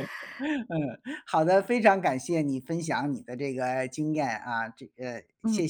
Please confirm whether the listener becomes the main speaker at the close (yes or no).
yes